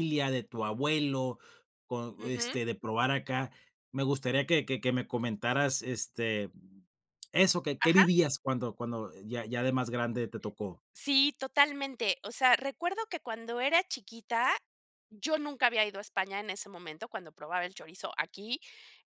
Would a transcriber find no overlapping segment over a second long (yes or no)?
yes